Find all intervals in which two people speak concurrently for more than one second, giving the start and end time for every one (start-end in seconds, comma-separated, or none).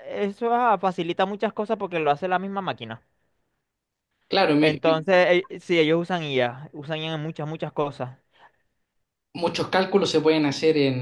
none